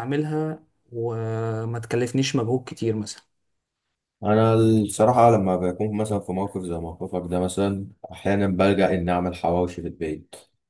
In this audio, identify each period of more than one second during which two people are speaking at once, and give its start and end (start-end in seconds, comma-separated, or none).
none